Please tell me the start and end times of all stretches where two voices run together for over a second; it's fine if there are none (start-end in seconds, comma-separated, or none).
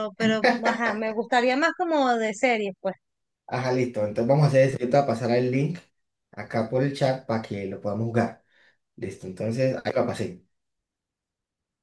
none